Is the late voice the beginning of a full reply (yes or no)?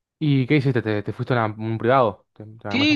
yes